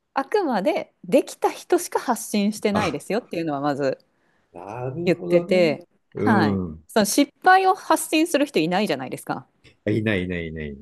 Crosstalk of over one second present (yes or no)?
yes